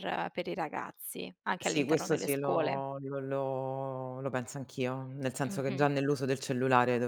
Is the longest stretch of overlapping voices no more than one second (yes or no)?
no